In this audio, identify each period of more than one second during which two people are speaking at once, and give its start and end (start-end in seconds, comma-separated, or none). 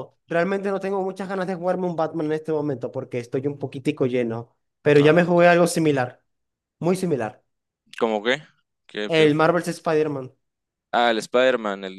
none